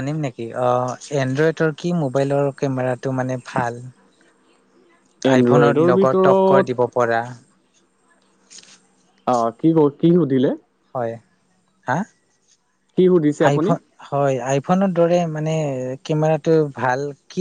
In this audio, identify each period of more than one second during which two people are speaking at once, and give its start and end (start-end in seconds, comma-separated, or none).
5.4-6.7